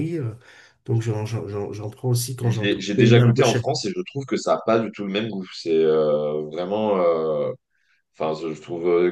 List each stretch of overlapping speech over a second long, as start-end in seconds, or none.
2.4-3.6